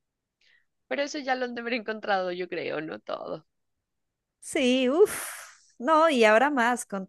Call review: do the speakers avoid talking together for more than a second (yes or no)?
yes